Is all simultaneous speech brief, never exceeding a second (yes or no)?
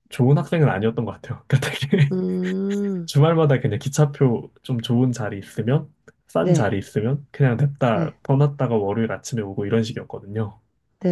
yes